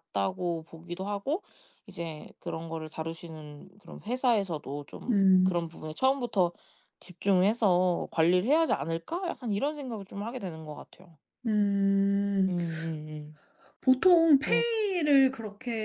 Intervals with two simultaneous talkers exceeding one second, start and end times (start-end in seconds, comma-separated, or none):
none